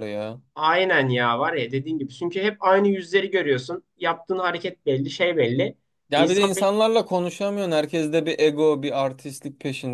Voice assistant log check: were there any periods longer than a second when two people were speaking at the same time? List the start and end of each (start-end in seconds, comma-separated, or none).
none